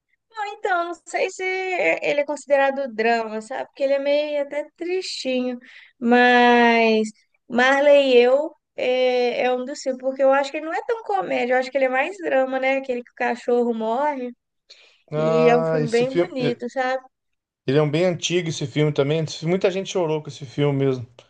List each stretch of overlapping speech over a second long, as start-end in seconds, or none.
15.2-16.6